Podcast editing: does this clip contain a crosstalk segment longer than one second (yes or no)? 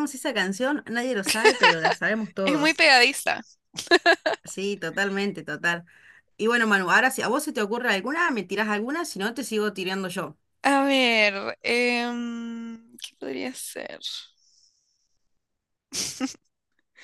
no